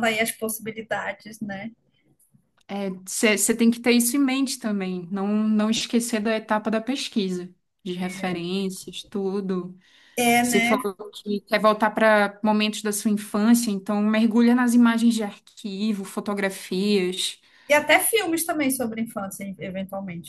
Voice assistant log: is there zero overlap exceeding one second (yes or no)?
yes